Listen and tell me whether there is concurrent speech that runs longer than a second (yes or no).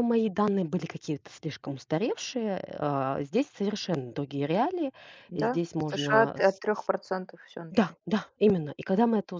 yes